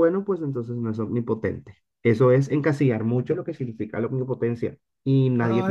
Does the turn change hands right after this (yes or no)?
yes